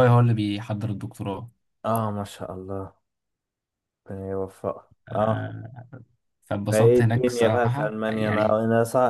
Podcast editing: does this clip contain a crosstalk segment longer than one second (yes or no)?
yes